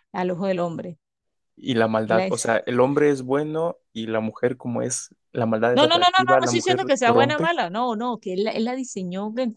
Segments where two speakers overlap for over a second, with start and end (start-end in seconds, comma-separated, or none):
5.7-7.5